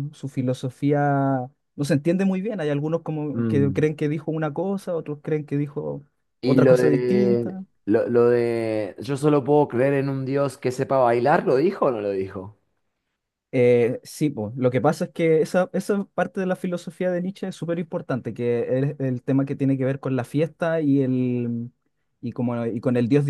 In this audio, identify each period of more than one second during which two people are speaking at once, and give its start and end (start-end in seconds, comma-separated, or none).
6.4-7.6